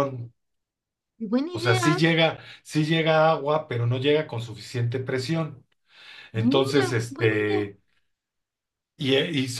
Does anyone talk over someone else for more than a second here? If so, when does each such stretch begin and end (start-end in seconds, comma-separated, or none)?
6.3-7.6